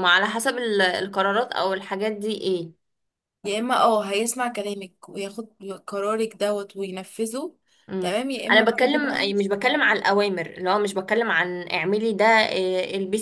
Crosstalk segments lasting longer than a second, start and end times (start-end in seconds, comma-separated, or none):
8.0-9.8